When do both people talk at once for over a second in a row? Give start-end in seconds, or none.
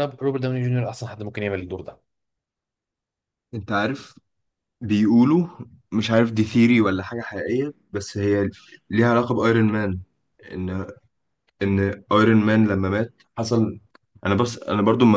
none